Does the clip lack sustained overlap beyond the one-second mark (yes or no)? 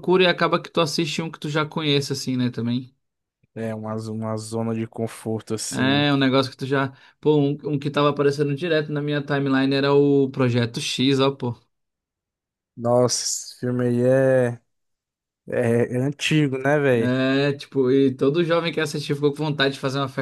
yes